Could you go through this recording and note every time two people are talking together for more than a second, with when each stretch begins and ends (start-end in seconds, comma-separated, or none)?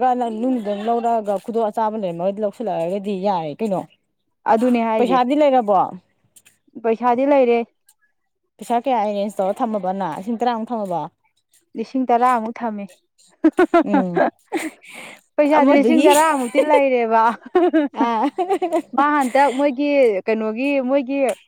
none